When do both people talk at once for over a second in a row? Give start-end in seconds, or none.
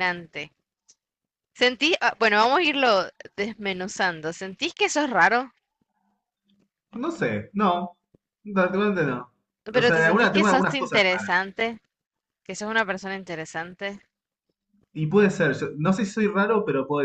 9.7-11.3